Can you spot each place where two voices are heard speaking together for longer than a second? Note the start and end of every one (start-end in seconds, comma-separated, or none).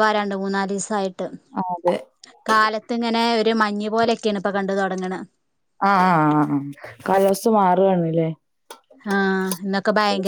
none